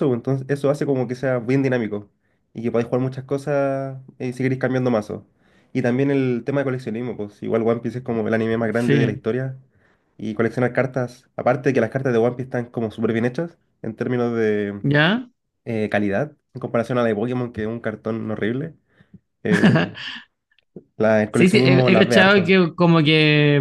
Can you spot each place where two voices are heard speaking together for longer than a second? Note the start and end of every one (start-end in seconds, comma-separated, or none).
21.3-22.5